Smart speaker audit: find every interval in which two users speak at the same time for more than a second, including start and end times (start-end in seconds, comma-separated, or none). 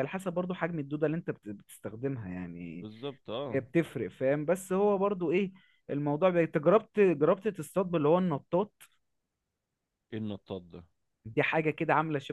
none